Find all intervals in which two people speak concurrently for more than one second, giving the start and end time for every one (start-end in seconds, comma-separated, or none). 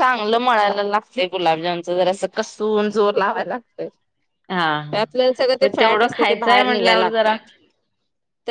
5.6-7.3